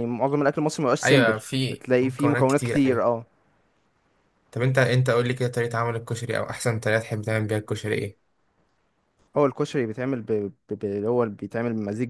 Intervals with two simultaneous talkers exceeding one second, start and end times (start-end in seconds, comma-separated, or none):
1.0-3.0